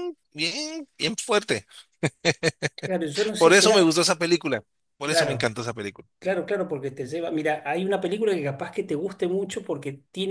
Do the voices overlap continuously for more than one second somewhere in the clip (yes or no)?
no